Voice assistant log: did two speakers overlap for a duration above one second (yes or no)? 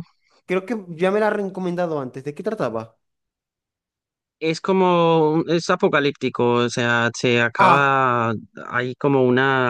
no